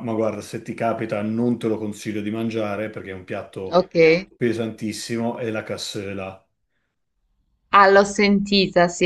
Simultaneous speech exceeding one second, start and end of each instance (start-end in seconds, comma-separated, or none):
none